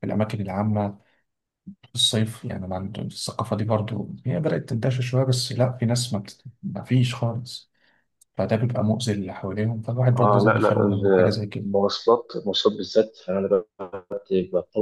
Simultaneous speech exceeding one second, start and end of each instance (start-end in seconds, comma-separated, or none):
10.2-11.7